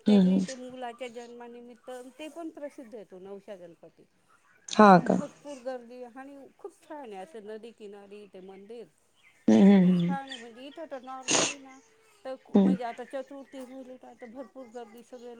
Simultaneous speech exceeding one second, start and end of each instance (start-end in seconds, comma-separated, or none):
none